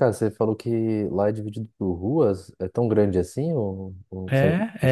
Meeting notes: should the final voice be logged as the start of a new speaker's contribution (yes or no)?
yes